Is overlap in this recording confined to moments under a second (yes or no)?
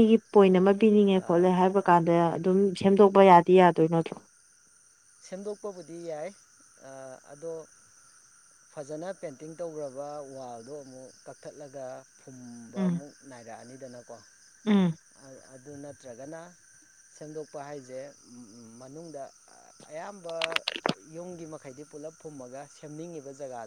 yes